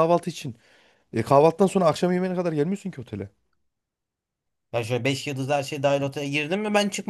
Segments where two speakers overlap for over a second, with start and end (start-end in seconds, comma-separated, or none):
none